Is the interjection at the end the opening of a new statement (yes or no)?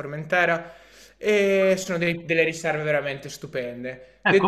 yes